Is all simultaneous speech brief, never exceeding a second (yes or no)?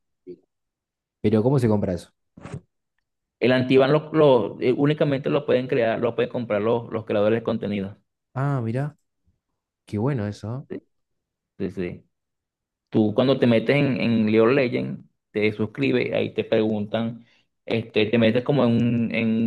yes